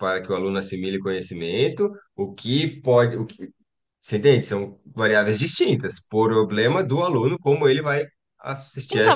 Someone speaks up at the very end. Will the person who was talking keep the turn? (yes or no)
no